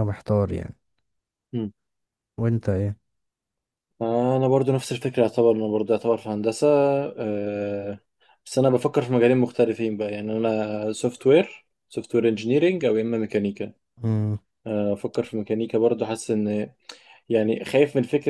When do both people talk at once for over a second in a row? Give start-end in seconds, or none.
none